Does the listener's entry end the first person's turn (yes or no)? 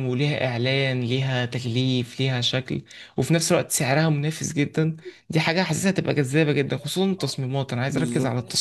no